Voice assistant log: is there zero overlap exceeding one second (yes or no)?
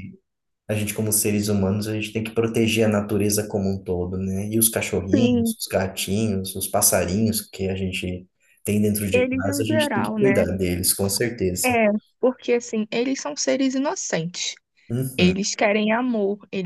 no